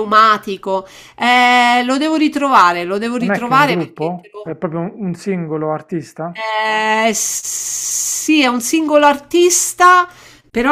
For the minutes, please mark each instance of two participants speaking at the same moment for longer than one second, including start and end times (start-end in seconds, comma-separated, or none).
3.2-4.5